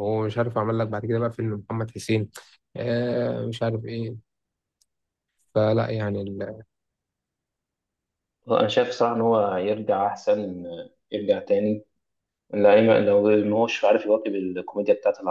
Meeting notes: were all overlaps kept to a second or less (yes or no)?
yes